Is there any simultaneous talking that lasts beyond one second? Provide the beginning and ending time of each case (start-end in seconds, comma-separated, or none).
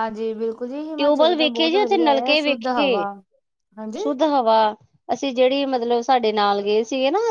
1.0-3.0